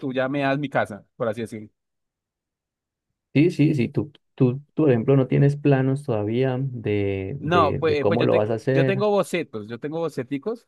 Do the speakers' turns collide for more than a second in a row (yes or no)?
yes